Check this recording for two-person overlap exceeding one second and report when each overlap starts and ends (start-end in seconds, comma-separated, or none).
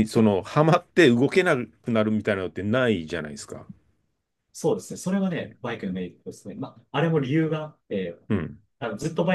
none